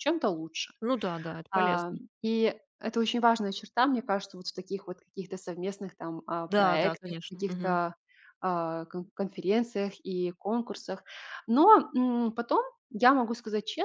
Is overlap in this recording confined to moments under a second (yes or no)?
no